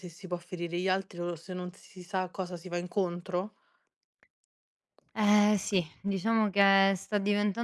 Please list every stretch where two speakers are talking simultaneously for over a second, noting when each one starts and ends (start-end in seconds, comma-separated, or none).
none